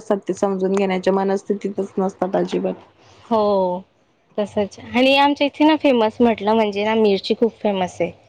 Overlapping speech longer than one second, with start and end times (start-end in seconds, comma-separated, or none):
none